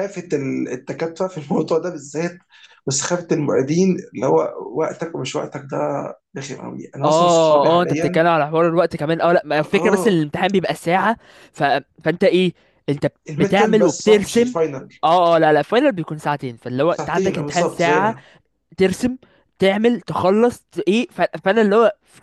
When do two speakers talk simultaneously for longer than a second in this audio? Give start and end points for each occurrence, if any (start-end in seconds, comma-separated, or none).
7.0-8.2, 13.3-14.5, 16.9-18.1